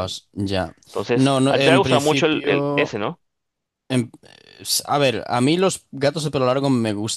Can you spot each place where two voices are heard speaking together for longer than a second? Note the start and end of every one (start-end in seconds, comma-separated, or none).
1.1-2.9